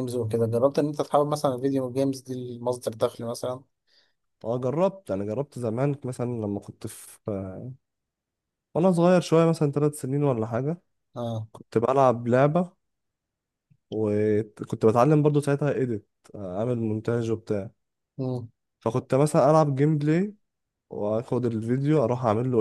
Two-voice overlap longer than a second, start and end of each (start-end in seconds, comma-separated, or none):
none